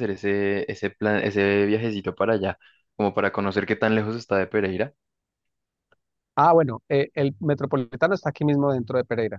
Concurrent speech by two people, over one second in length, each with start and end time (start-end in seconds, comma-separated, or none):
none